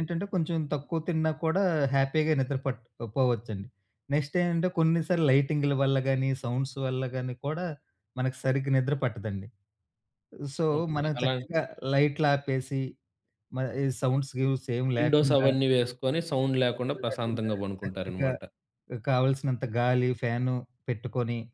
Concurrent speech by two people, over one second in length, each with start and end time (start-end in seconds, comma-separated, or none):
16.8-18.3